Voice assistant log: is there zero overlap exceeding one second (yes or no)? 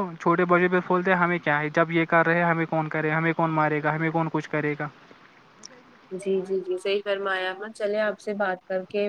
yes